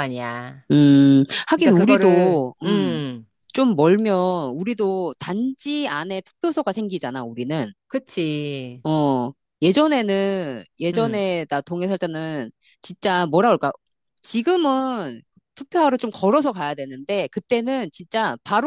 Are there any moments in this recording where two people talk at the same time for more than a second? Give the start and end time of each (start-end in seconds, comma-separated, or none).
1.6-3.0